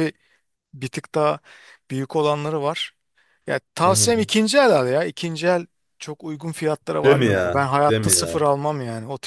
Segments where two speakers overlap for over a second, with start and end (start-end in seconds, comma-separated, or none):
7.0-8.4